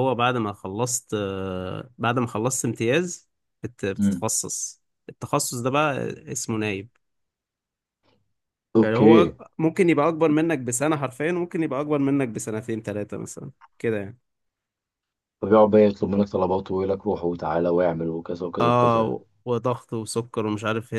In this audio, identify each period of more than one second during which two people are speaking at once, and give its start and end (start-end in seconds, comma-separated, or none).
none